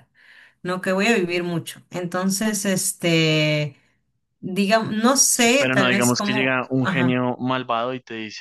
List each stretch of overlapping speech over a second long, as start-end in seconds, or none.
5.6-7.3